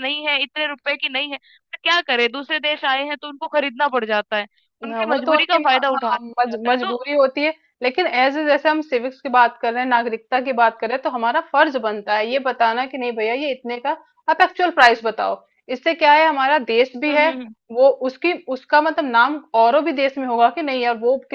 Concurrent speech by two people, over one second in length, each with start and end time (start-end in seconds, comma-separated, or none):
4.9-7.0